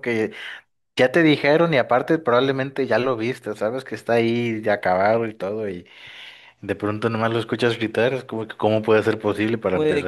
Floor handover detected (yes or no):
yes